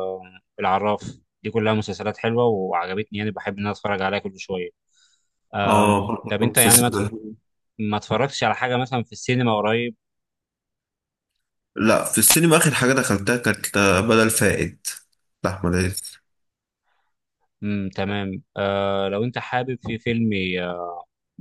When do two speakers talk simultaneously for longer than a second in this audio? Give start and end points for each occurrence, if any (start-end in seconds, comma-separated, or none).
5.6-7.0